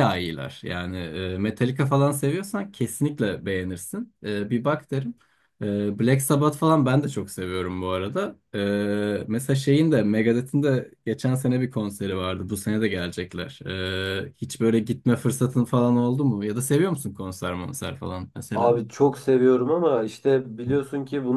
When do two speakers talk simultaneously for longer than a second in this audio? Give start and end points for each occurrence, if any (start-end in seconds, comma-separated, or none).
none